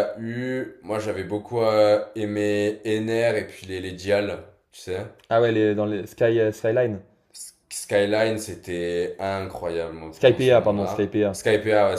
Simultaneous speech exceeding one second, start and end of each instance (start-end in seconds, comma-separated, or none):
10.1-11.4